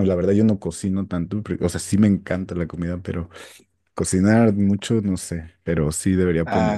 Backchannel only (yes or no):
no